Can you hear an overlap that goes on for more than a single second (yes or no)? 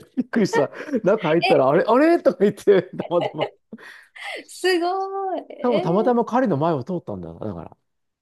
no